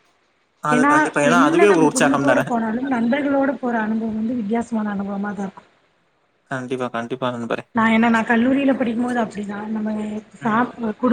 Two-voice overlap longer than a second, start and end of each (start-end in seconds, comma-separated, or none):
none